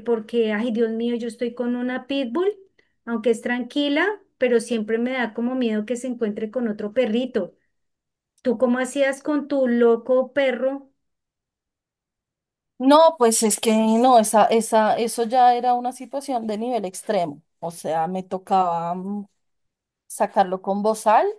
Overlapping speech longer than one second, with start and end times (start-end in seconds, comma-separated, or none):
none